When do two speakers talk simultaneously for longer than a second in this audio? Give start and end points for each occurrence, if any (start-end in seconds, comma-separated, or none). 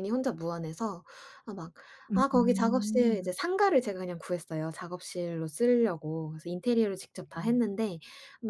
2.1-3.4